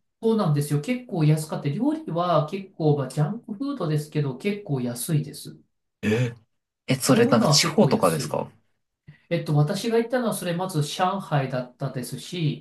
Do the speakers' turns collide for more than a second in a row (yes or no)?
yes